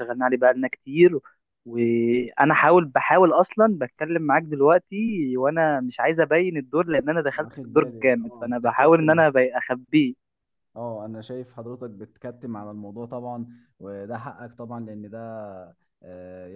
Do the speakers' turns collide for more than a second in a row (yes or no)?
yes